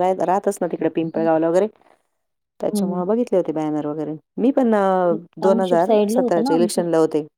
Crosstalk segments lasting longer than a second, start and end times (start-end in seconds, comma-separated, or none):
5.5-6.8